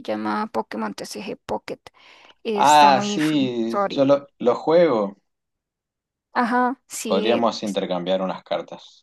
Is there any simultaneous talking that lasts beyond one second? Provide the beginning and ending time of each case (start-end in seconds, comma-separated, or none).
2.5-4.1